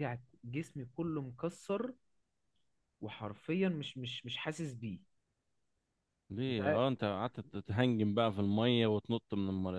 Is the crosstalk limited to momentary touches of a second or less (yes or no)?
yes